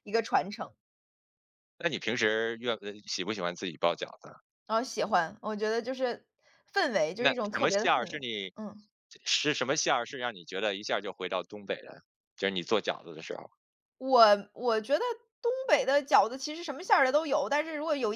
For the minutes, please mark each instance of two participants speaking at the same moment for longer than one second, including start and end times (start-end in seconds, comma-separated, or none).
7.2-8.5